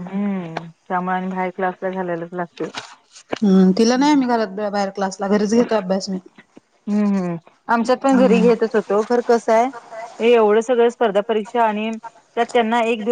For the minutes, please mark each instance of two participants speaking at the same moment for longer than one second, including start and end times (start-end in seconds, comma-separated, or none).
none